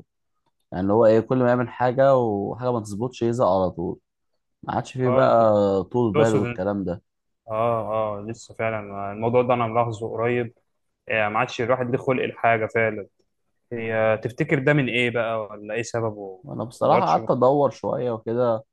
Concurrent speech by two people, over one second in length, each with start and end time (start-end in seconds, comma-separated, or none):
none